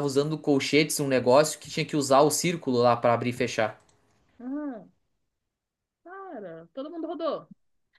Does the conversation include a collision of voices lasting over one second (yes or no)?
no